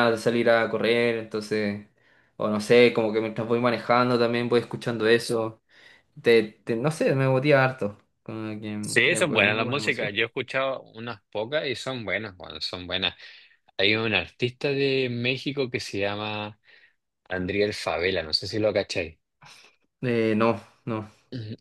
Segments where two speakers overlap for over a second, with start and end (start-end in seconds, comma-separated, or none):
8.8-10.1